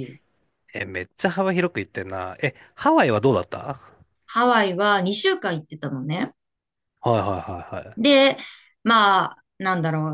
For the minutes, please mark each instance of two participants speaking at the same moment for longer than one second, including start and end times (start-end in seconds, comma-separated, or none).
none